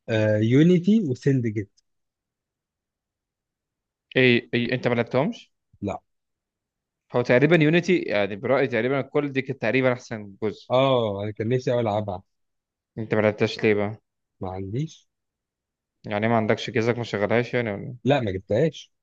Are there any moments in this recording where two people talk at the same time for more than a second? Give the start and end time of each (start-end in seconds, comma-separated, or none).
none